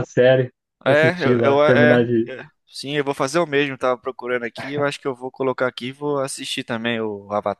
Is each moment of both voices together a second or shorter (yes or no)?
no